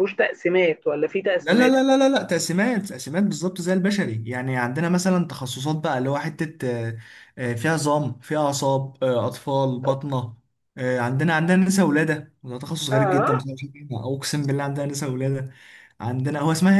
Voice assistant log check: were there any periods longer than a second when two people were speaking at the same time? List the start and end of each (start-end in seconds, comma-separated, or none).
none